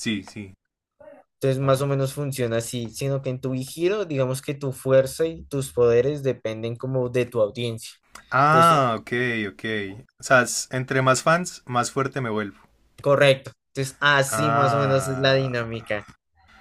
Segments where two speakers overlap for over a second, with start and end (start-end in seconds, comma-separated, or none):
14.3-15.7